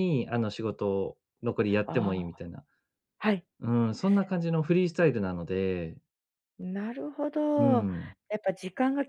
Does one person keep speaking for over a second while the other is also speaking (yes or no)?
no